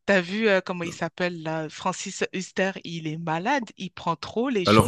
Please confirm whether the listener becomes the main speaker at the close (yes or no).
yes